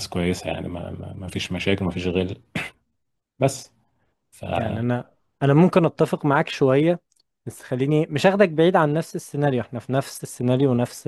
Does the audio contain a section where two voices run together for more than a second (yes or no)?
no